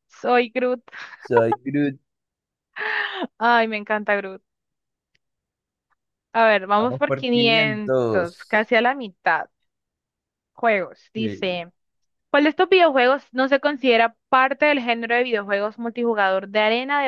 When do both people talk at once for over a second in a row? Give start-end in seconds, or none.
6.8-8.7